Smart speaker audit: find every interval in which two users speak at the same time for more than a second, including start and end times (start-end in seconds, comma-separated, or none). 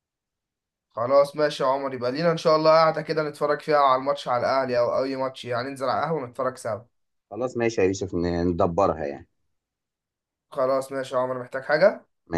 none